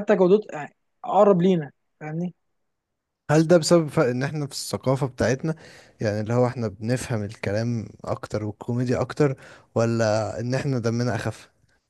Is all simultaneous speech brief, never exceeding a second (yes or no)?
yes